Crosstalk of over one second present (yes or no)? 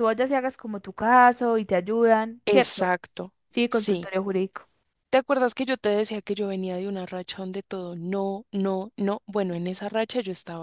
no